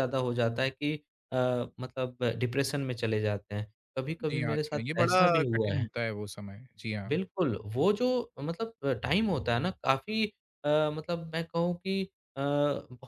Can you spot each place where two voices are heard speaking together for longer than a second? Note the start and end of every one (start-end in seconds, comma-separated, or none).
4.3-5.9